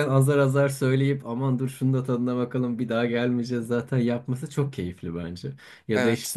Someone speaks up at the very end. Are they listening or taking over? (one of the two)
listening